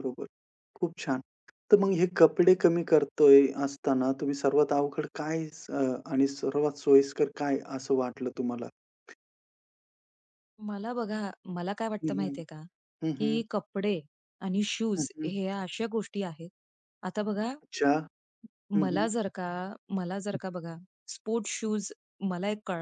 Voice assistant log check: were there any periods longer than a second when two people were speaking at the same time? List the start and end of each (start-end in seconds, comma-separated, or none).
none